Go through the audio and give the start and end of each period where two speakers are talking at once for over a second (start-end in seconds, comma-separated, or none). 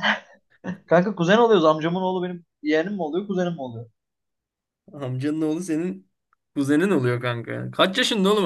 none